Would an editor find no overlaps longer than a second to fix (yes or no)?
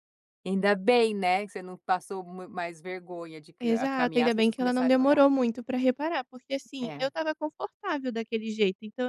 no